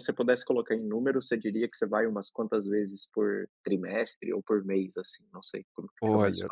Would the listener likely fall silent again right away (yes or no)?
no